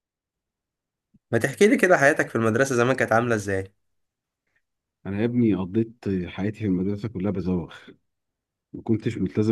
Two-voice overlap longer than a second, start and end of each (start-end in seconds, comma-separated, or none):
none